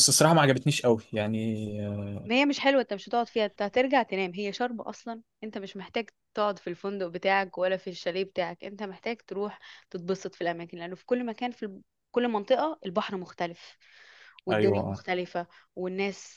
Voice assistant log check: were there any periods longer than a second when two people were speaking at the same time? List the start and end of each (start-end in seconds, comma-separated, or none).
none